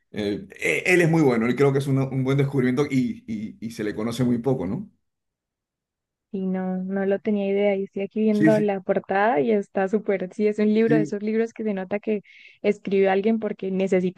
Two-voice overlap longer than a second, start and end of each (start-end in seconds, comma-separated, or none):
none